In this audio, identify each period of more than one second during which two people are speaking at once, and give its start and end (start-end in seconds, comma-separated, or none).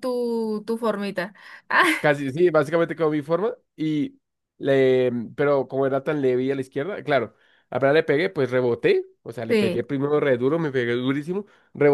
none